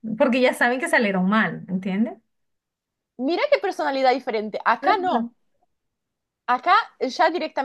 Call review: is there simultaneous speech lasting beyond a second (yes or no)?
no